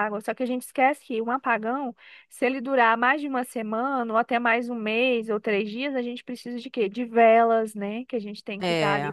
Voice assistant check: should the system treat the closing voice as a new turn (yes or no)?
no